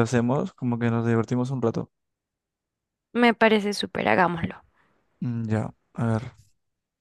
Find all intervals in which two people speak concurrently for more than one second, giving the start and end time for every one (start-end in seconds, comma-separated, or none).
none